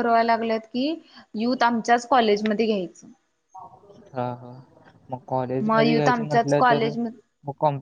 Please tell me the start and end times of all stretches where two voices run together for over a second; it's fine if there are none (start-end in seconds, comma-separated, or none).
5.7-6.9